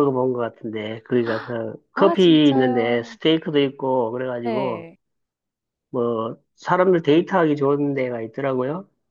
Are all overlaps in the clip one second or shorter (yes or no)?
no